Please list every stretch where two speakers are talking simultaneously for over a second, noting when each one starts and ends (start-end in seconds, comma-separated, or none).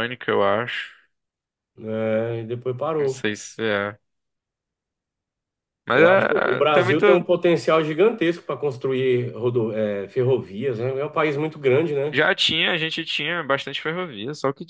5.9-7.3